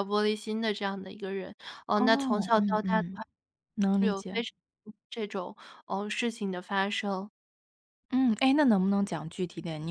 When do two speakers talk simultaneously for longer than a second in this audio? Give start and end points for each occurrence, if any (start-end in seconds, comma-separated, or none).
2.0-3.2